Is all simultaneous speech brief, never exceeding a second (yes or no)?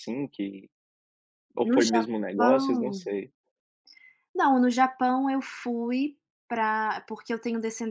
no